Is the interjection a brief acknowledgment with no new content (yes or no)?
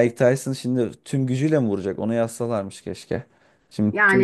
no